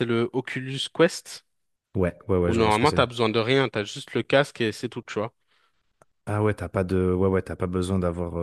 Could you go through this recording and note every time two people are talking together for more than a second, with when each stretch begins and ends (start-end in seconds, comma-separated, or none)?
none